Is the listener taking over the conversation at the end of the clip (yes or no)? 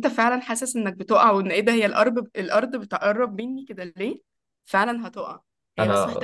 no